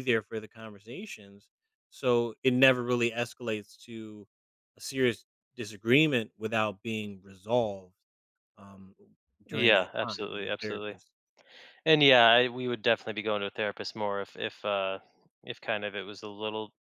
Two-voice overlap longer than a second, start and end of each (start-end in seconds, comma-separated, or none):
9.5-11.0